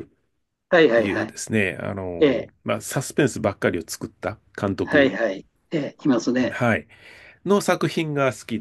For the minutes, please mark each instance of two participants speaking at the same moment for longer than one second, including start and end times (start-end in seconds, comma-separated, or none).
none